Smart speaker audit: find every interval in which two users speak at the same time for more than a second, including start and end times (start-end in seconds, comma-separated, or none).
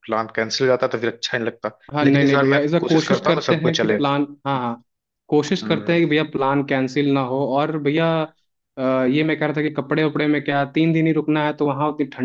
1.9-4.0